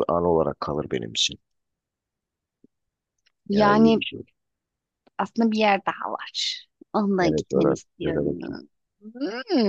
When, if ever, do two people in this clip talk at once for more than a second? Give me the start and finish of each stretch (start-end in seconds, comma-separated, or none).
7.2-8.6